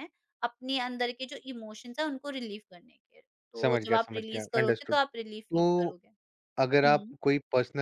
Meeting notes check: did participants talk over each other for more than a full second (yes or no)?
yes